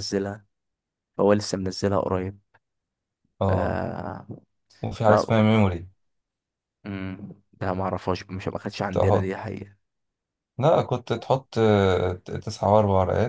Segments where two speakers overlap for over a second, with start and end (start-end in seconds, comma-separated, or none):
none